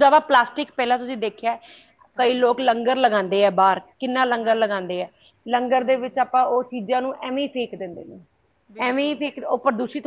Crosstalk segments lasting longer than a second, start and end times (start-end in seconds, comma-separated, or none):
none